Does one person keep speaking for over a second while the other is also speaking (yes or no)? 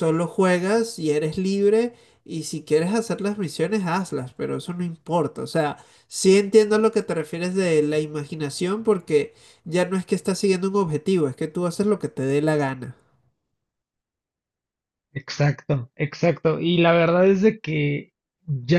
no